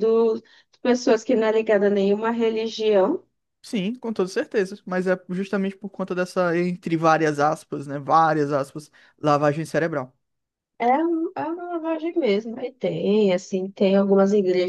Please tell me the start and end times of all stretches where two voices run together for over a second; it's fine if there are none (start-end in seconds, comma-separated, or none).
none